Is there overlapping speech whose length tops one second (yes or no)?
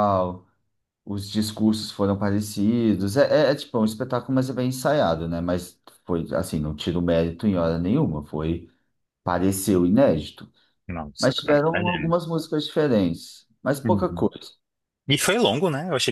no